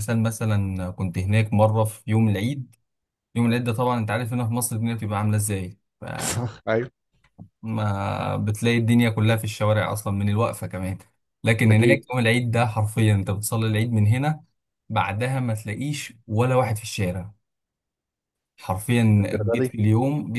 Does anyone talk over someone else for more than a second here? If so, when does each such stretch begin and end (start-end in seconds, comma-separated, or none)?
none